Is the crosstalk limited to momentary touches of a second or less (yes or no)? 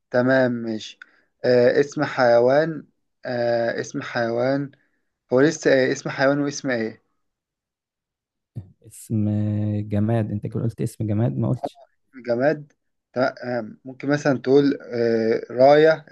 yes